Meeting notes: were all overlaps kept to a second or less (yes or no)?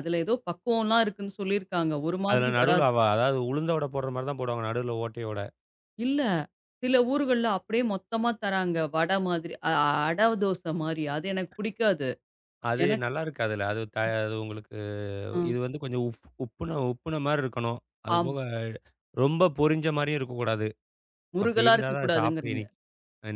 no